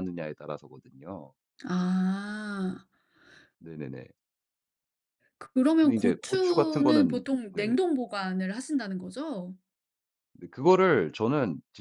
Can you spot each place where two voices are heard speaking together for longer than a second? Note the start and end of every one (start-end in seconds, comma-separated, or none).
5.8-7.7